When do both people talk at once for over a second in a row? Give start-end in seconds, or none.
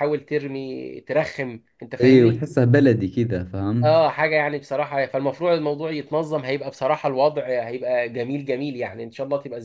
none